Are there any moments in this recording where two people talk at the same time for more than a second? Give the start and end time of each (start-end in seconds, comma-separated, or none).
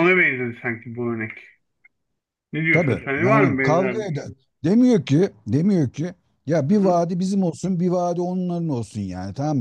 2.7-4.1